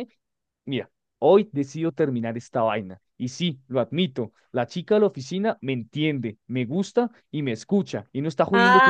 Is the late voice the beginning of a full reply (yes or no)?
yes